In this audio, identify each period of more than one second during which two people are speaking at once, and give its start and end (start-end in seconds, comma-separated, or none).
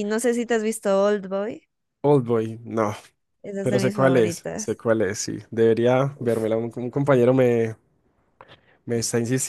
3.6-4.8